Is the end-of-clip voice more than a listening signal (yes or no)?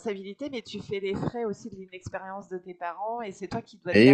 no